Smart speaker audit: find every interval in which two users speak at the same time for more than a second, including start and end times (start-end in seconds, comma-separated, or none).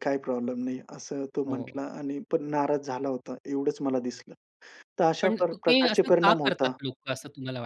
5.2-6.8